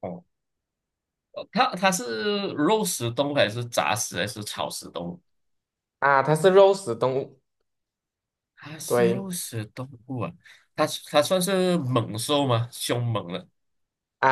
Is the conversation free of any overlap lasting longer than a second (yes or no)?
yes